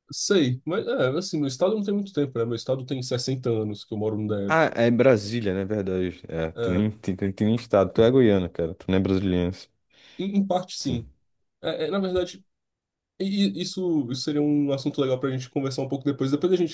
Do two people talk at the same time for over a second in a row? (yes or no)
no